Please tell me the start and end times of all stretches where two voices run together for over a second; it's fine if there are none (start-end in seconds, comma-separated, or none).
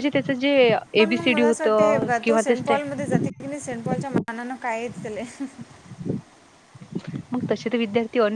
1.0-2.9